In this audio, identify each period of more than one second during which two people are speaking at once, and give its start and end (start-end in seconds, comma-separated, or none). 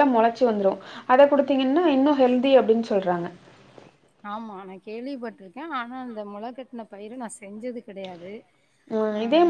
none